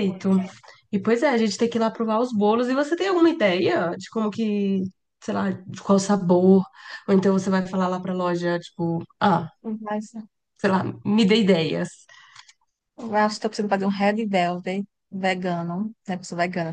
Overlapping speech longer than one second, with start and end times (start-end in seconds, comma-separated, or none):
none